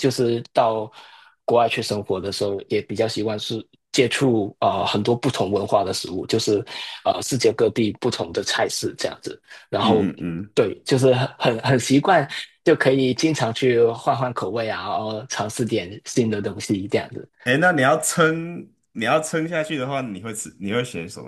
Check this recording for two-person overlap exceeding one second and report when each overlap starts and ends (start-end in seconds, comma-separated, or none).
none